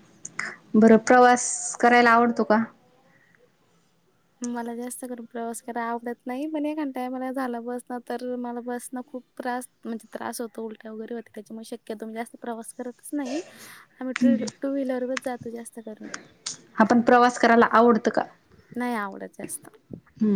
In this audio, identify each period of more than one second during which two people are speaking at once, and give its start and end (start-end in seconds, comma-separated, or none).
none